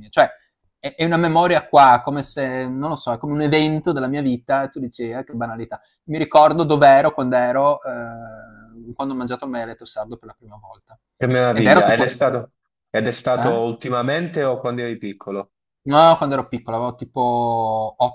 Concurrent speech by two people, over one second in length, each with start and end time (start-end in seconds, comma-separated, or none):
none